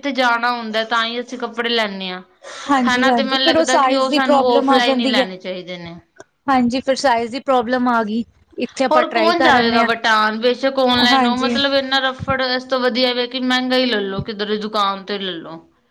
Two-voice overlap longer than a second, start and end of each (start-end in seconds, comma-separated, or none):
2.9-5.2